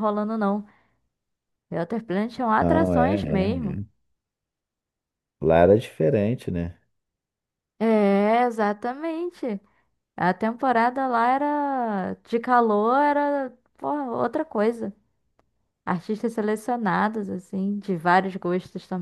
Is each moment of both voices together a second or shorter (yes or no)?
no